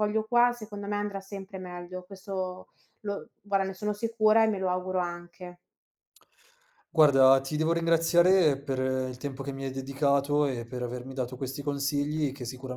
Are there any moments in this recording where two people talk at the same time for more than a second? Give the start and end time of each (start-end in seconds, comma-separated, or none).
none